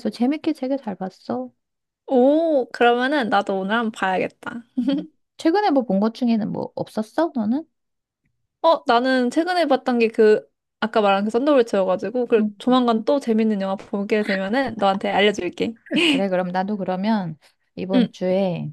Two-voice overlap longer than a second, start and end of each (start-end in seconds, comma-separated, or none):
none